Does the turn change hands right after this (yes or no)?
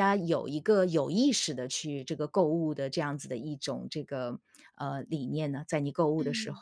yes